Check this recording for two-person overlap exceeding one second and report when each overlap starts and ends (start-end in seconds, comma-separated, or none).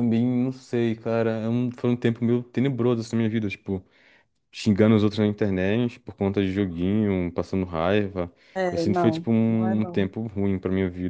8.7-10.1